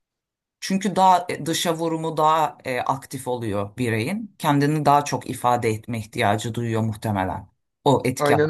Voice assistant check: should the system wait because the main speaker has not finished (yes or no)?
no